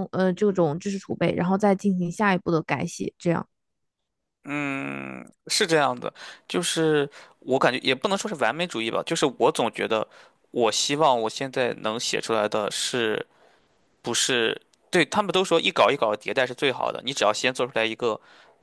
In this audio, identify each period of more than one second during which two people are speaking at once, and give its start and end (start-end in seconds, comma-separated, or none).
none